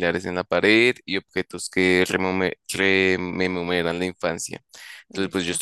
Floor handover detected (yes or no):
no